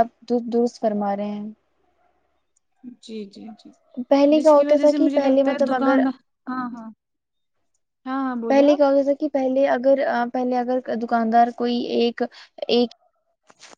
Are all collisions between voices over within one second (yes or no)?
no